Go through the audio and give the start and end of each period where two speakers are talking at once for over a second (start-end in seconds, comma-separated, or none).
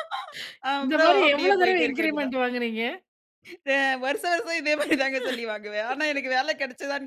0.8-2.3